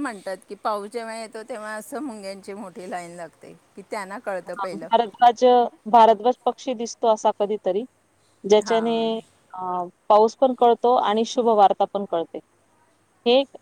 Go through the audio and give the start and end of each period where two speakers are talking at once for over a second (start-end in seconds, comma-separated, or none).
none